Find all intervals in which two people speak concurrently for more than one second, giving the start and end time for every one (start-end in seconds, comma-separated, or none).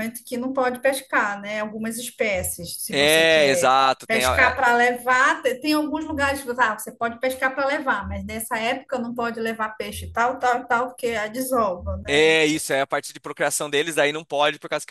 2.9-4.7